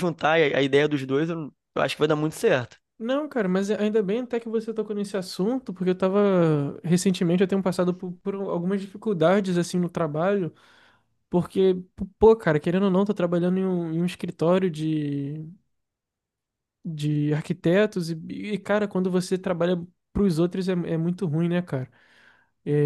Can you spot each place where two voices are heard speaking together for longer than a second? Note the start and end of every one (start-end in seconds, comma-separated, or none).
none